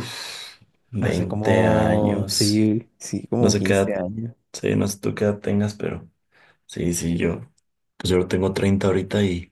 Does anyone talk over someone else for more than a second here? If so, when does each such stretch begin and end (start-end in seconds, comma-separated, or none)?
1.0-2.6